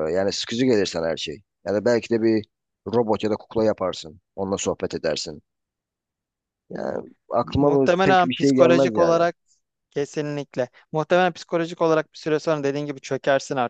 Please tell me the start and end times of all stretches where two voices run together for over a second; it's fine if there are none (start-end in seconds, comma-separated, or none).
7.4-9.2